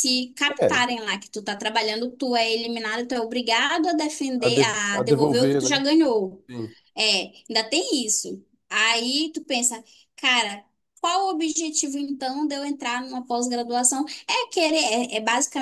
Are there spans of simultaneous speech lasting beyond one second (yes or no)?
yes